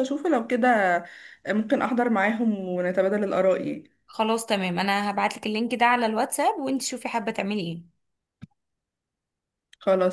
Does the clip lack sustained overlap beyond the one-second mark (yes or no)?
yes